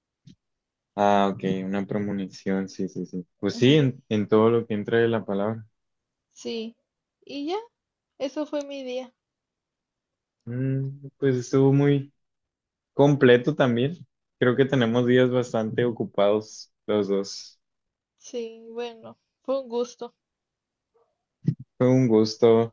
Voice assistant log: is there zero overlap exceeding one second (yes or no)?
yes